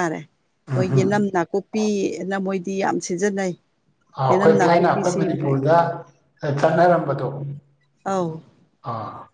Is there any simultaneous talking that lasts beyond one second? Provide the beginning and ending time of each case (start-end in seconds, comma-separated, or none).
4.3-5.5